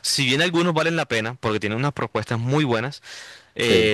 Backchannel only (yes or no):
yes